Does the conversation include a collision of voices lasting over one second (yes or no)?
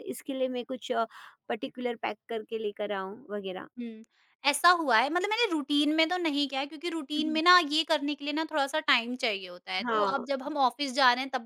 no